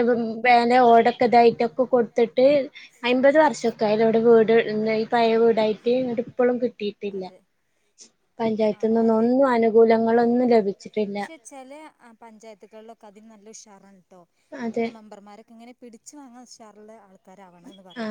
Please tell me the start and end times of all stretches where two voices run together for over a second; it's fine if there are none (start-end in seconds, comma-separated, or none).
none